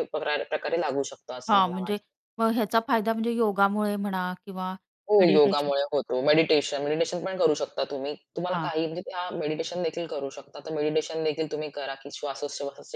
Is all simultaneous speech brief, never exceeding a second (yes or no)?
yes